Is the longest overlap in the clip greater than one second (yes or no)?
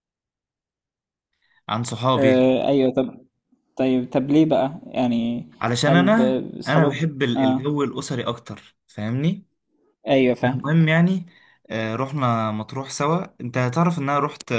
yes